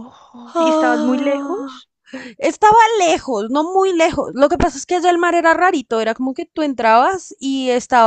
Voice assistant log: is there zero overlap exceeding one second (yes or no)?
no